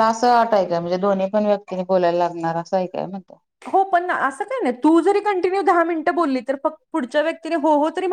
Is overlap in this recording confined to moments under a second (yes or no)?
yes